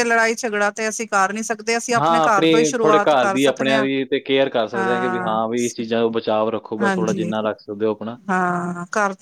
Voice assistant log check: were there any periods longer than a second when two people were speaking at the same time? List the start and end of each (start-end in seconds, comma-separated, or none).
2.0-3.9